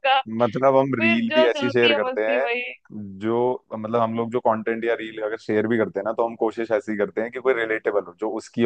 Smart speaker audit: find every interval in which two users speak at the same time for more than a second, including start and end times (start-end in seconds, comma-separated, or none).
1.0-2.5